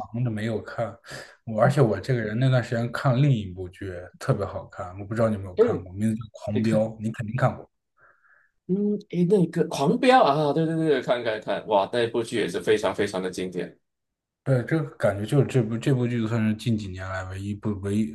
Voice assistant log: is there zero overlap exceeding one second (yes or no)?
yes